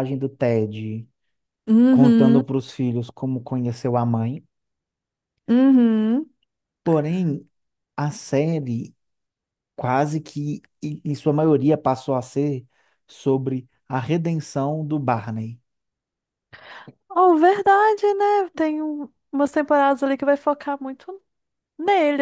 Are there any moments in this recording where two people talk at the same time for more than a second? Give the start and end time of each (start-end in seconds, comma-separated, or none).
none